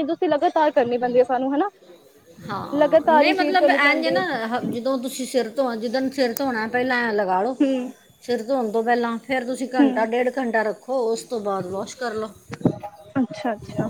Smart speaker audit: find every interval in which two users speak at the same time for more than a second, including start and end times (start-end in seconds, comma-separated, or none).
2.7-4.2